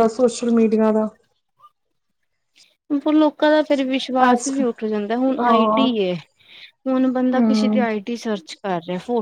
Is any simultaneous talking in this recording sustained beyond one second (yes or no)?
no